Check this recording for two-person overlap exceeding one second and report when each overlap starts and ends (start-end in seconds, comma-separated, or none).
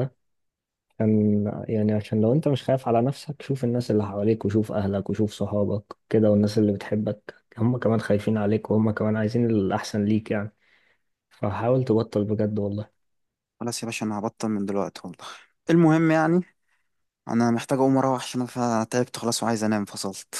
none